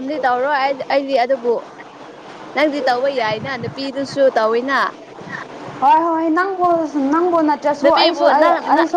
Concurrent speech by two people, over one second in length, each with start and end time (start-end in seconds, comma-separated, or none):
none